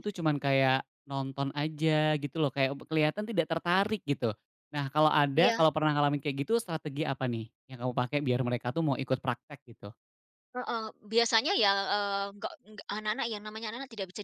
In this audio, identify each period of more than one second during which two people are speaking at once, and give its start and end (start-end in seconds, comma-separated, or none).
none